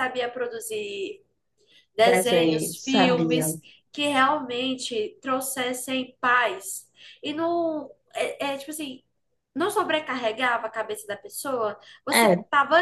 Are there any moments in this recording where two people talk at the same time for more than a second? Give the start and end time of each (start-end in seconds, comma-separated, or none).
2.0-3.5